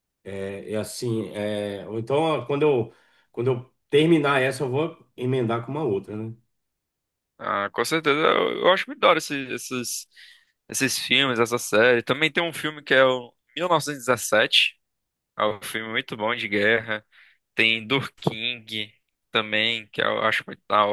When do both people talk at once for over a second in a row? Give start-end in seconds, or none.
none